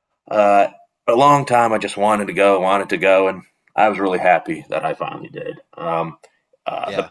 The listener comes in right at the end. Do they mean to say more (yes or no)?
no